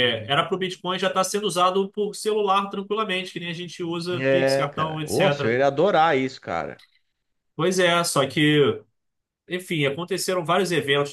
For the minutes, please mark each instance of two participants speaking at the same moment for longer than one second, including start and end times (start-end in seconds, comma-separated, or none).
4.2-5.6